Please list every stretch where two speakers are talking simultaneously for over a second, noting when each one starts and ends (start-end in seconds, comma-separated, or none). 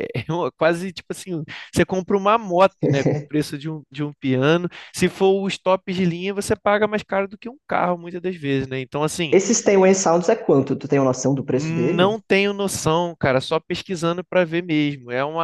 none